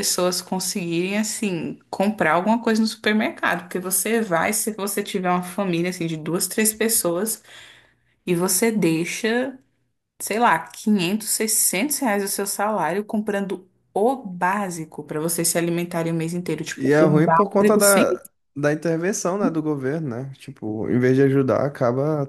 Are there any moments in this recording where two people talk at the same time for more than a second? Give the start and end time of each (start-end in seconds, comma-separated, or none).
16.8-18.0